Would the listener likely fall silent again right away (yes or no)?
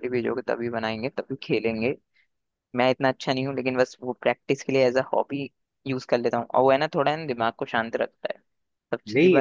no